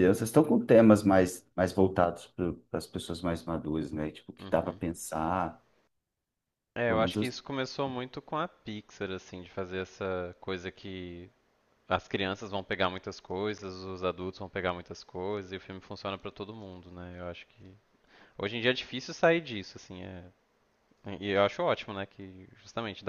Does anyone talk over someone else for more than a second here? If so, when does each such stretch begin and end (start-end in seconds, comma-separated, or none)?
none